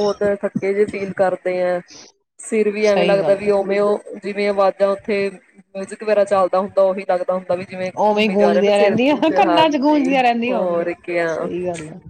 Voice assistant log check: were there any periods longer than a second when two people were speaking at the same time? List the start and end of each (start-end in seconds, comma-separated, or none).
none